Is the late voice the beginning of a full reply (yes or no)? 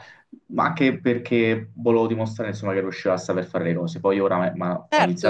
no